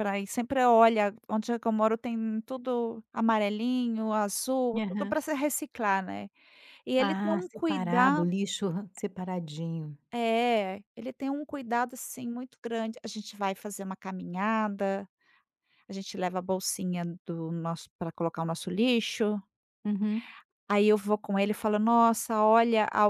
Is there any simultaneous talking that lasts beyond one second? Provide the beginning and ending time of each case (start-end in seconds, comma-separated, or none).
7.0-8.3